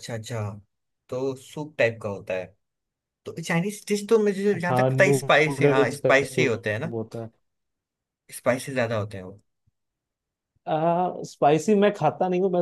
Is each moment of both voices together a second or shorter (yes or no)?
no